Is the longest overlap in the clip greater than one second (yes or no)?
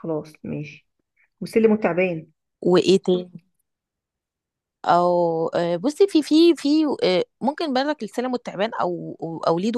no